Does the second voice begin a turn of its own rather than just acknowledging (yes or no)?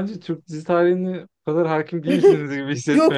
yes